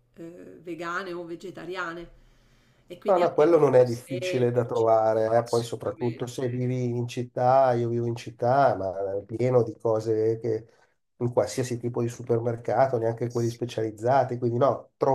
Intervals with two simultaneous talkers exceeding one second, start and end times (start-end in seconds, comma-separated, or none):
3.1-6.7